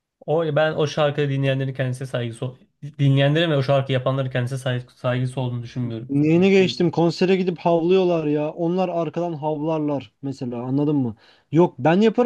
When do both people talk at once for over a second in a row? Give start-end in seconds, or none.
none